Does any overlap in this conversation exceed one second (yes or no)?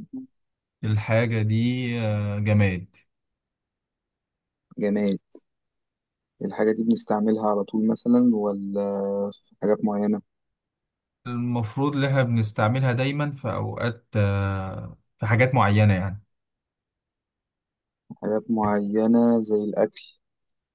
no